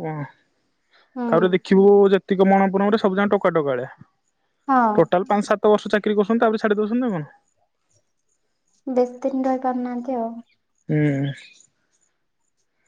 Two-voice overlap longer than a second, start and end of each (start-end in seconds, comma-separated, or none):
none